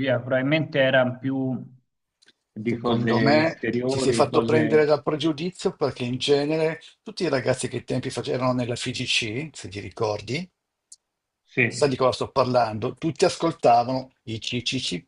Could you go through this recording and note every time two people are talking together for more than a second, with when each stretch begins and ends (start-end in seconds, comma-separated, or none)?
2.6-4.9